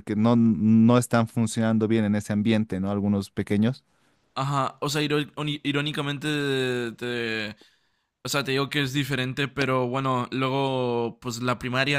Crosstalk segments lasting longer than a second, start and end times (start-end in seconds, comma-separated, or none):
none